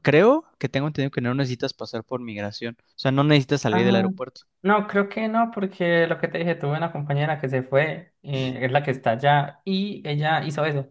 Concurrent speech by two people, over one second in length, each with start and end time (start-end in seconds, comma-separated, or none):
none